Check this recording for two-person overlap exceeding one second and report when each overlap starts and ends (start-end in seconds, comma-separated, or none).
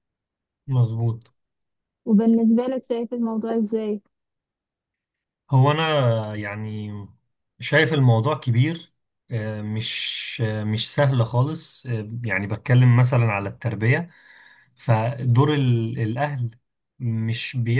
none